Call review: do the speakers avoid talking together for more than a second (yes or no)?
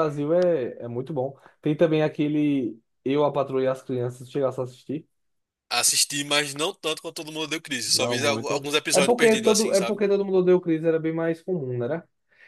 no